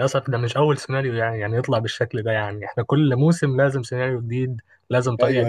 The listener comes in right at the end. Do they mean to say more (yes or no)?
yes